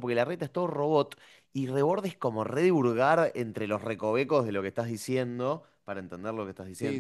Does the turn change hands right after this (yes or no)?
yes